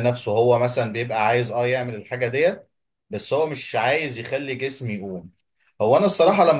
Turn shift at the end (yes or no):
no